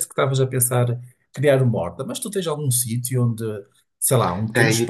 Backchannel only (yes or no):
no